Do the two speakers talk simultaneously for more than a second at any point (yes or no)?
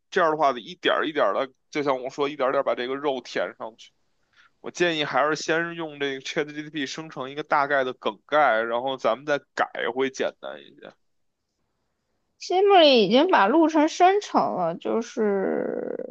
no